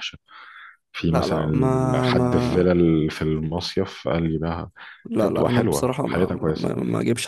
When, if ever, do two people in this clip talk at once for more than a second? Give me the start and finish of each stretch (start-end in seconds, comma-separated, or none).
1.1-2.6, 5.2-6.7